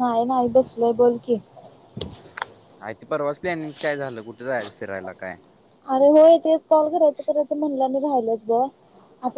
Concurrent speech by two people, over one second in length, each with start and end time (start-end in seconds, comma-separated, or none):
none